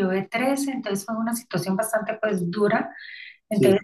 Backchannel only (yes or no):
yes